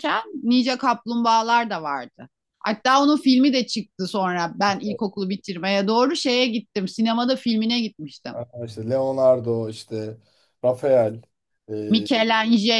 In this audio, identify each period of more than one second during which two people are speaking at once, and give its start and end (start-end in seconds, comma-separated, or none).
none